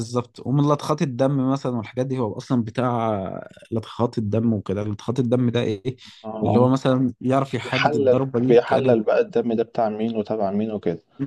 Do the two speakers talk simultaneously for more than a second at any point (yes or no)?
yes